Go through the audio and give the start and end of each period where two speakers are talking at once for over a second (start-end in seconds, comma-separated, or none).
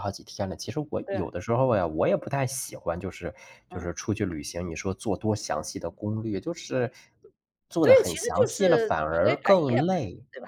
7.8-9.8